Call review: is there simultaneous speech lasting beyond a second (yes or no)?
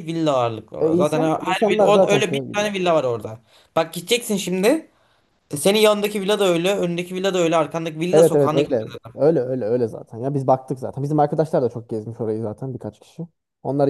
yes